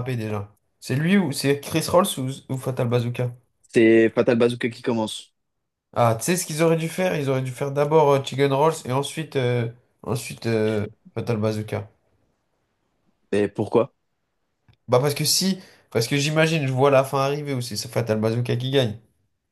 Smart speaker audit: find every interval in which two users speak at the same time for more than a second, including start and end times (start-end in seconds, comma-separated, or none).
none